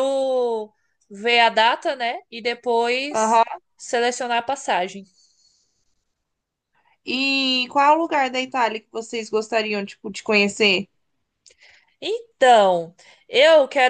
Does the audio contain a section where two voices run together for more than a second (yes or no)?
no